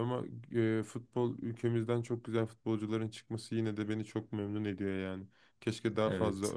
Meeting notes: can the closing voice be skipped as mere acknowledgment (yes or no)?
yes